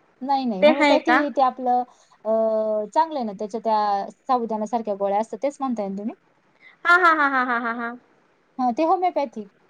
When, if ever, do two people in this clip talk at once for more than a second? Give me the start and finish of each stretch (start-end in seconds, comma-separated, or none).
none